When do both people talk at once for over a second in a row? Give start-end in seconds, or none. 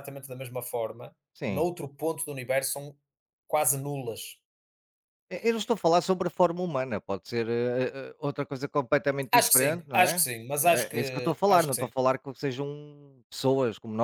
9.3-11.9